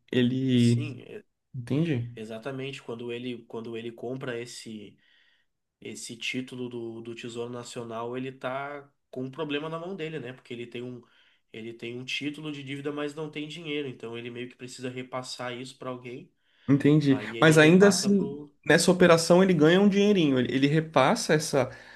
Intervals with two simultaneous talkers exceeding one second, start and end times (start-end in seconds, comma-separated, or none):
17.1-18.5